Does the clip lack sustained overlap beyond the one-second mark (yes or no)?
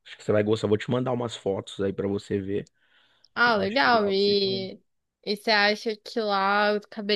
no